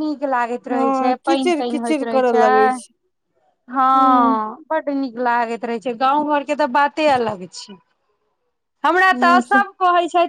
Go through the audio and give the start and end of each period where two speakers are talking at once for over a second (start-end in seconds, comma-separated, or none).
0.7-2.5